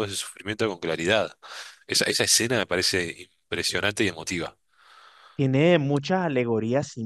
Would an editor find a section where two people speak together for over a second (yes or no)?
no